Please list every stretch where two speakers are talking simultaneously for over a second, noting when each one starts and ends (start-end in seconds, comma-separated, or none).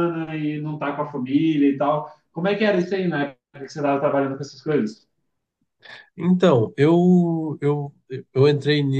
none